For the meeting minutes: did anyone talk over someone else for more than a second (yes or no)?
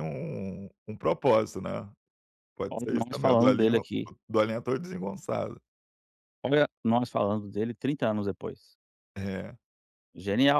yes